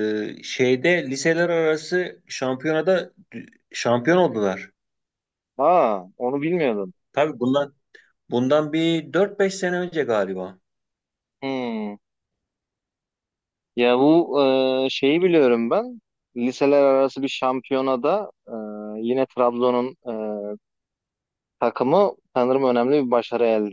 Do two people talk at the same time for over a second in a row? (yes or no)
no